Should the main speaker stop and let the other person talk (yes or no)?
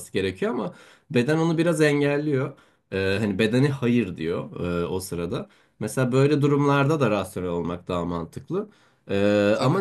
no